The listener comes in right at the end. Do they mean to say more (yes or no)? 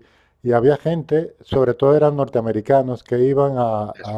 no